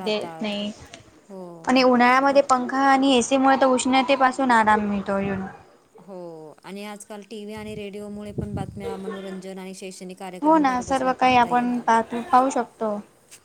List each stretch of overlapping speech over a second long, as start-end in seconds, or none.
10.5-12.0